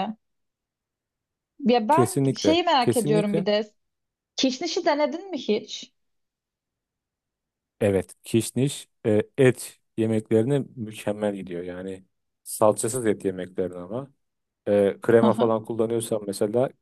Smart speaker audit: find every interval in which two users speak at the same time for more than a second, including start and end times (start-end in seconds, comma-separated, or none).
1.9-3.5